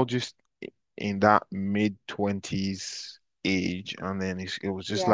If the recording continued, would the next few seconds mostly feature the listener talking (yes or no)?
no